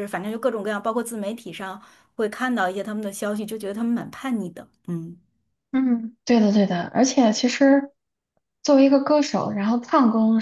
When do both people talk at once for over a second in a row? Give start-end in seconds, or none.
none